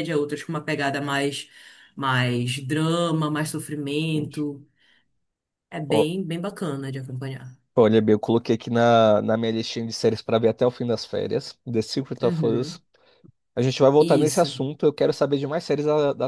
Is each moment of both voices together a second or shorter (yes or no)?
yes